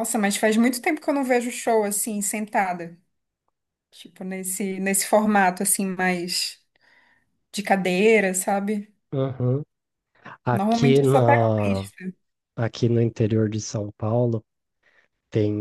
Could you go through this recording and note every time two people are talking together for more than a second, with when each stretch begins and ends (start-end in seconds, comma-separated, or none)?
10.5-11.9